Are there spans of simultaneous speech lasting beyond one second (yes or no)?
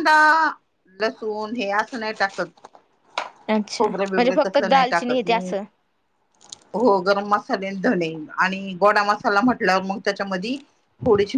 yes